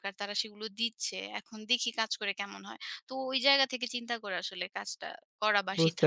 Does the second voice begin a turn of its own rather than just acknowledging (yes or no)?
yes